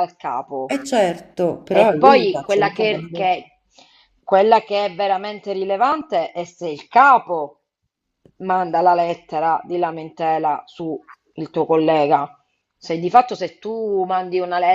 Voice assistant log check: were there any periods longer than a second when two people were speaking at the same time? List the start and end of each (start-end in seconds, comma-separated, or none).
1.7-3.3